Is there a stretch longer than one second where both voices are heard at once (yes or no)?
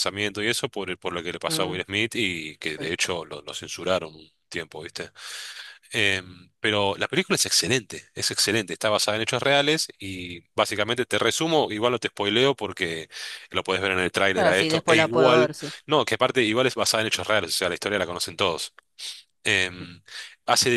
yes